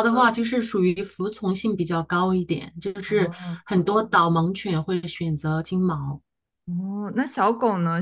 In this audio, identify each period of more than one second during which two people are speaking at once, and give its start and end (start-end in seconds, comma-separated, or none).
none